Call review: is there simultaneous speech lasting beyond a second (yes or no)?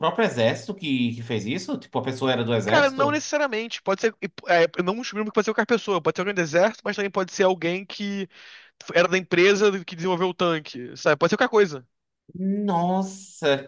no